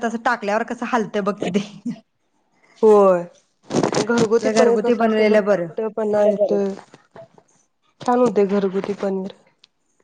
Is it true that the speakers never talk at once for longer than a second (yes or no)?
no